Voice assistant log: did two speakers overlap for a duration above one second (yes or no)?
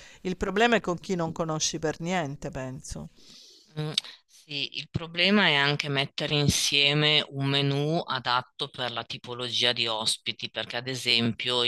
no